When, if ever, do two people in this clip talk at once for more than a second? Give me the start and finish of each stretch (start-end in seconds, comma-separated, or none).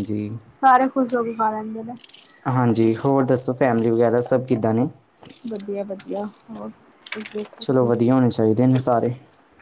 none